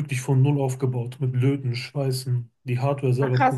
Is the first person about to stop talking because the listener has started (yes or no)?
yes